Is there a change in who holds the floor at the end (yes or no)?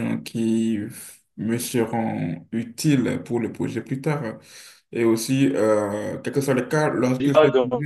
yes